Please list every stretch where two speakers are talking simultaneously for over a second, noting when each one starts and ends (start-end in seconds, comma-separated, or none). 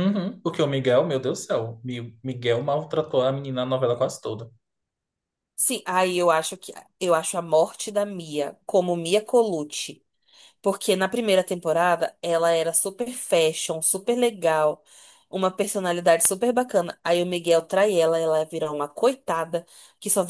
none